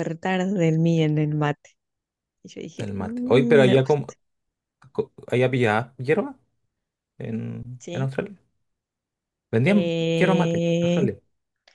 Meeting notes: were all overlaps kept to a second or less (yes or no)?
no